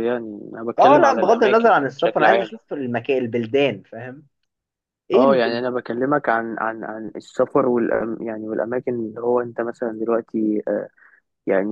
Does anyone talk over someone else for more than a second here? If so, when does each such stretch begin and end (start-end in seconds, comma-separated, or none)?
0.8-2.5